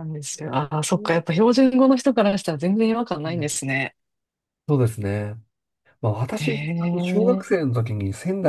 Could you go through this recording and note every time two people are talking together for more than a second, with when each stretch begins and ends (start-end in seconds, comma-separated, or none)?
6.3-7.7